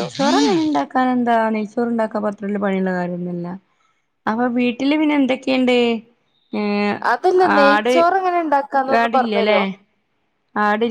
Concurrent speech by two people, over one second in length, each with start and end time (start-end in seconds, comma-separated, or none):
none